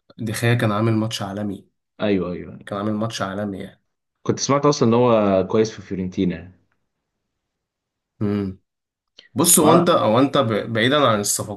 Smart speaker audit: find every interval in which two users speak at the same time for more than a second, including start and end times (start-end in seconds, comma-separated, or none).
none